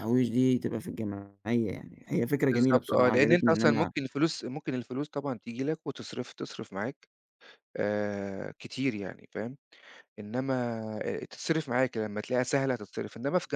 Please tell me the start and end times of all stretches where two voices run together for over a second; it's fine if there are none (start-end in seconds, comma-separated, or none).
2.5-3.9